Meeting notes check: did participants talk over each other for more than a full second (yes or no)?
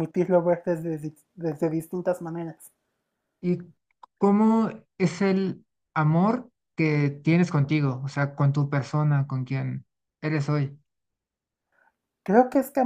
no